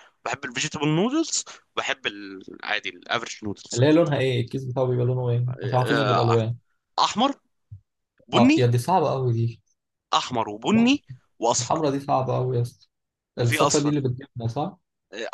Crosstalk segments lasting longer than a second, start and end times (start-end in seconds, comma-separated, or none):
none